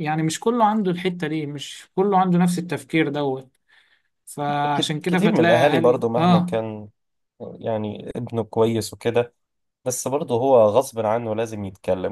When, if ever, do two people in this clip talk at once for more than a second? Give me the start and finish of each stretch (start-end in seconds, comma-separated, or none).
4.7-6.6